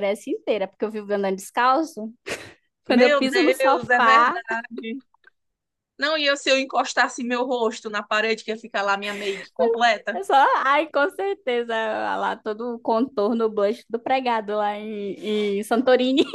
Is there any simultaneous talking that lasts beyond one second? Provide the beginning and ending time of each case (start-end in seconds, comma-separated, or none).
2.9-4.4